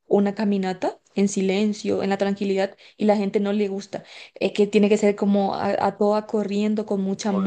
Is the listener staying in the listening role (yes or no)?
no